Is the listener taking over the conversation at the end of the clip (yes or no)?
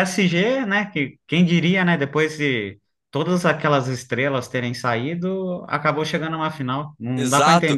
yes